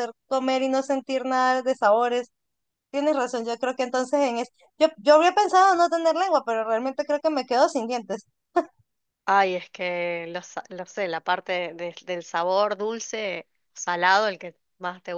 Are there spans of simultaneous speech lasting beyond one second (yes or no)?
no